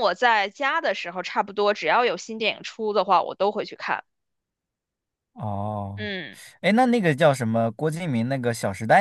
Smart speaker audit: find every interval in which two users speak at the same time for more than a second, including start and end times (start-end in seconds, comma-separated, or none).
none